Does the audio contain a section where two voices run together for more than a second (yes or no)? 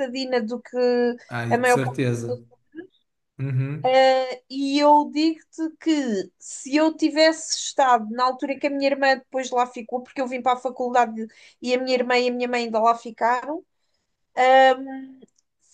no